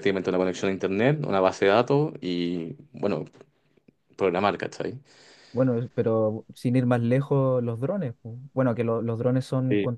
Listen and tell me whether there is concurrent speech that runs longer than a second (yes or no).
no